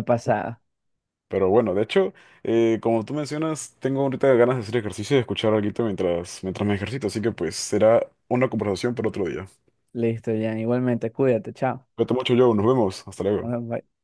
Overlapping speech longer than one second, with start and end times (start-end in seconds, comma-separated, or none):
none